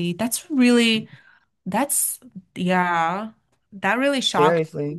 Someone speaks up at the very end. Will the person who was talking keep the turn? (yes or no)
no